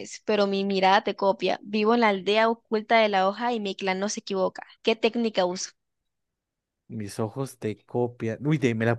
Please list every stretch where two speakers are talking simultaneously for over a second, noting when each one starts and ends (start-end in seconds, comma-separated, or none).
none